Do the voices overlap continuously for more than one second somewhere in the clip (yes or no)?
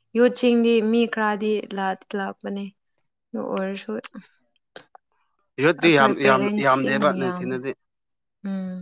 yes